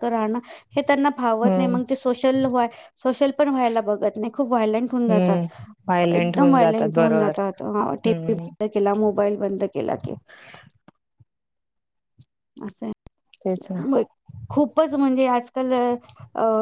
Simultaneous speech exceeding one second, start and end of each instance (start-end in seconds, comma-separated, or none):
6.1-7.3